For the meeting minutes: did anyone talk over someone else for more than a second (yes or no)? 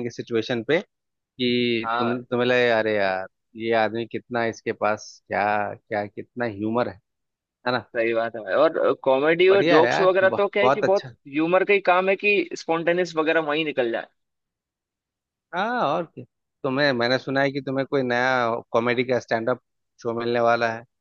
yes